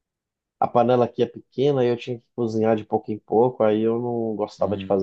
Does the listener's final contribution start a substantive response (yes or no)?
yes